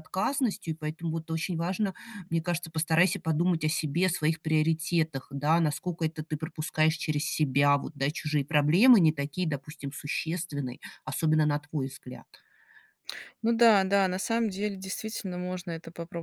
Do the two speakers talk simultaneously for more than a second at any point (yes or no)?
no